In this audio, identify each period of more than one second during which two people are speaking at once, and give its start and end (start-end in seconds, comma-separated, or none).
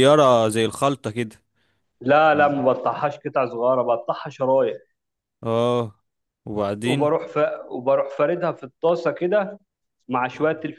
none